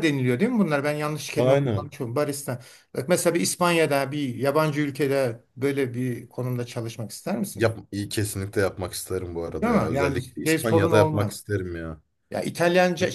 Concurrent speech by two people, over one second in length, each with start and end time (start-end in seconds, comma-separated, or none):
9.6-11.4